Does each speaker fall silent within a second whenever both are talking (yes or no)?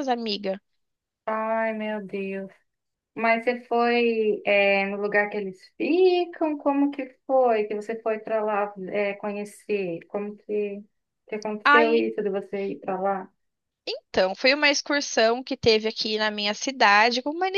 yes